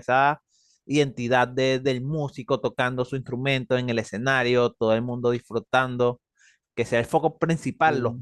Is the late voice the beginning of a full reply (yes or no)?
no